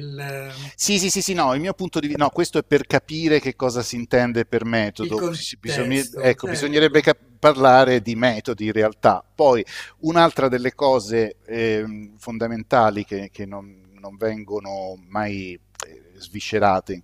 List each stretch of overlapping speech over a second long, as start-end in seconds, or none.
5.0-7.1